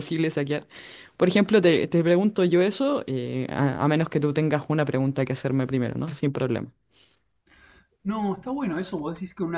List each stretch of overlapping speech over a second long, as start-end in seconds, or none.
none